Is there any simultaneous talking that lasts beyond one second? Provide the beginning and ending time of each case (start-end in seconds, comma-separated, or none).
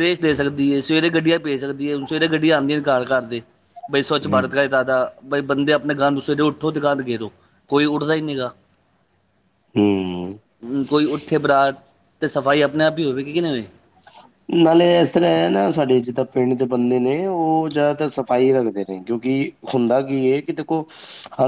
none